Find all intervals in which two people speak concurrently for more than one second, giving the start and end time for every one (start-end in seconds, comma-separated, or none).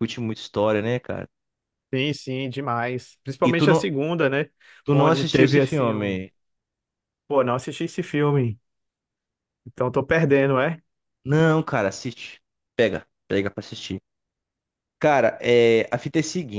4.9-6.2